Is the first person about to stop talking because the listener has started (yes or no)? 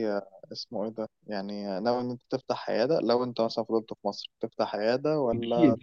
yes